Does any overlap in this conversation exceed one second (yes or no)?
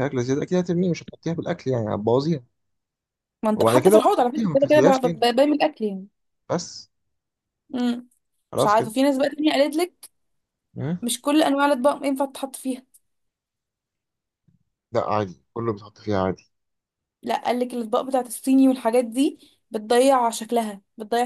yes